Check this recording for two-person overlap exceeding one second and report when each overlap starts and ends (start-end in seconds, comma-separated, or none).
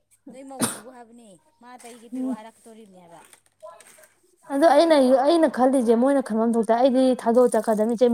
none